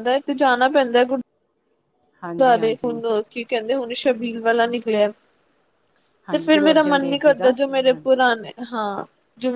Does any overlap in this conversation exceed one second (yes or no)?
yes